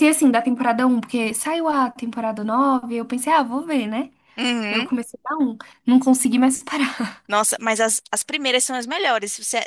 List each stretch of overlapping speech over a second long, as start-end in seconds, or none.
none